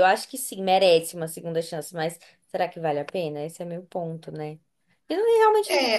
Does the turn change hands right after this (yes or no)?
yes